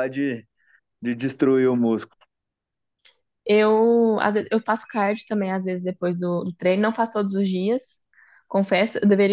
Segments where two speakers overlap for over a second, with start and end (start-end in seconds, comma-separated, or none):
none